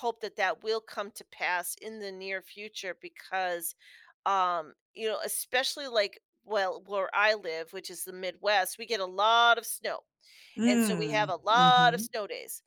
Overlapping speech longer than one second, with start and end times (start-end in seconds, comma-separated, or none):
10.7-12.1